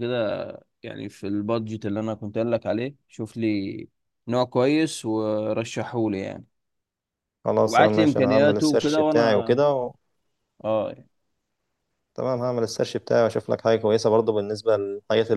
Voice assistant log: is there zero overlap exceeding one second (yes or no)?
no